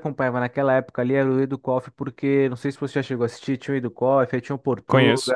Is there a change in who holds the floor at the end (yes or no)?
no